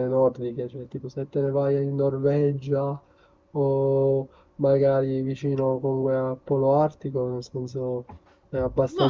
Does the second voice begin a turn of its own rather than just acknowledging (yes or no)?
yes